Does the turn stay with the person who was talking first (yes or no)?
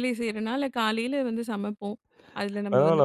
no